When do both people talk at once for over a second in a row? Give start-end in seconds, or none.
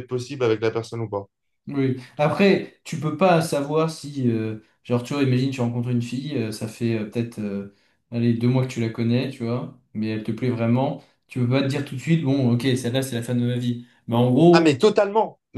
none